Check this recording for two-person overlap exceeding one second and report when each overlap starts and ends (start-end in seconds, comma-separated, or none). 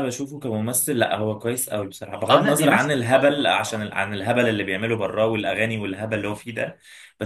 2.3-3.9